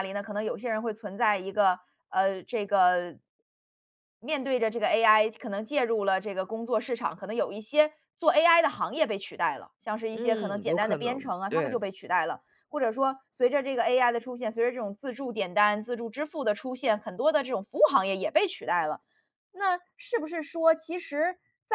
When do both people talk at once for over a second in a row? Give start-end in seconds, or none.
10.1-11.8